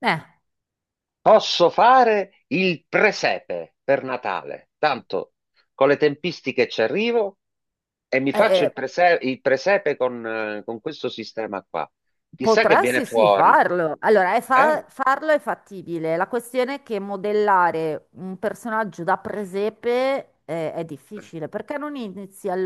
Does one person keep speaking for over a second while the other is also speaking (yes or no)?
yes